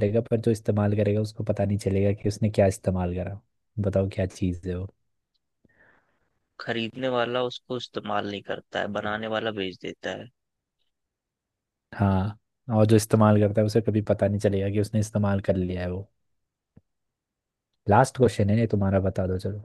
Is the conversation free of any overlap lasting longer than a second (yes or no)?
yes